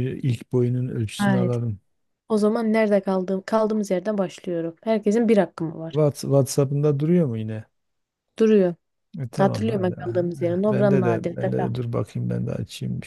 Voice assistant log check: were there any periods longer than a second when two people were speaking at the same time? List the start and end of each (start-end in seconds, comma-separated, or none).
9.4-11.5